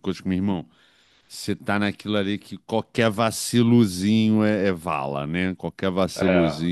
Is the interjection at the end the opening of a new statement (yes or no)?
no